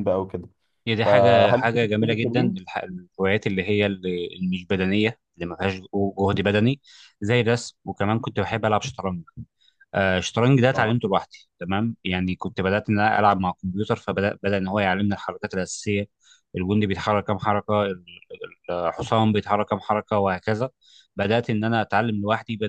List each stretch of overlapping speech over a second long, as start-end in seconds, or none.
1.0-2.6